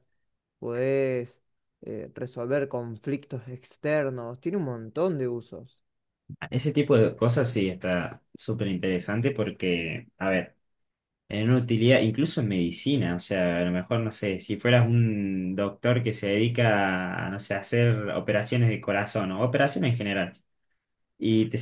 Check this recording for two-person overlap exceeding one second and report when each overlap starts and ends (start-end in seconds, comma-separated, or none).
none